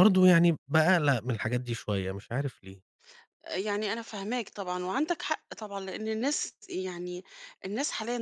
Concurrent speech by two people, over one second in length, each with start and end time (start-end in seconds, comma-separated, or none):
none